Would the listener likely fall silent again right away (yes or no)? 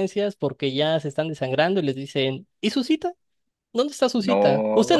yes